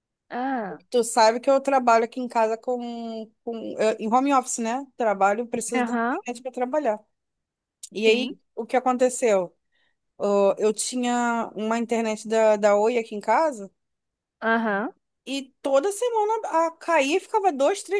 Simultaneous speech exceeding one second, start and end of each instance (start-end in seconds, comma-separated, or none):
none